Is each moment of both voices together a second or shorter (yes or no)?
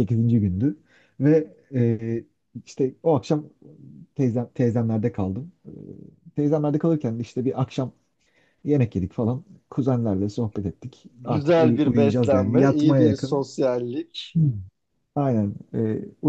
no